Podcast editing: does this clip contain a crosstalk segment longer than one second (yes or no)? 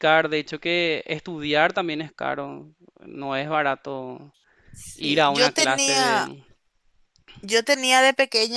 yes